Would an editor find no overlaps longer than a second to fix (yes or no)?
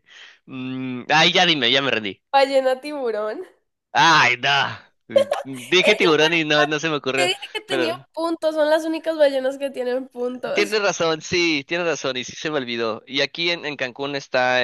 no